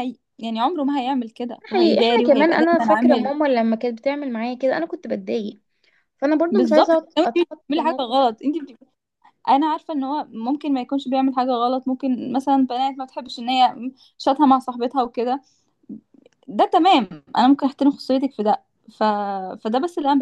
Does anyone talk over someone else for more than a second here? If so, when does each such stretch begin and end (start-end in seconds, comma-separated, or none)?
1.6-3.3, 6.5-8.1